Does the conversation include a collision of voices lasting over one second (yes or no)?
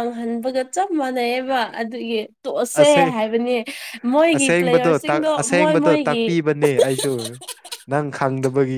yes